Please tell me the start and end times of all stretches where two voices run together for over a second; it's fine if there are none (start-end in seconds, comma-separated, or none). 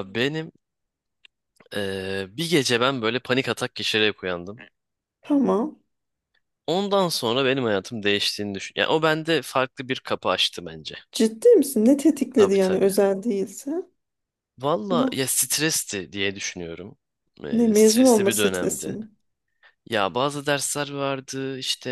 17.5-19.0